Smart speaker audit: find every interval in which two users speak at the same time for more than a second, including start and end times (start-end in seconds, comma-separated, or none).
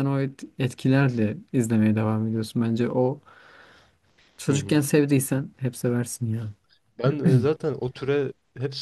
none